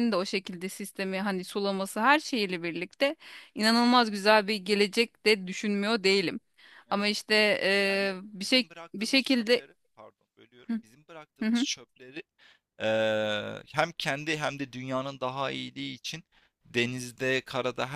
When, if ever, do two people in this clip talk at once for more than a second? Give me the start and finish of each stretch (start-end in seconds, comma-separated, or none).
7.8-9.6